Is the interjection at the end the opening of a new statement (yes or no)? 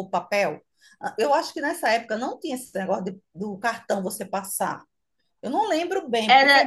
yes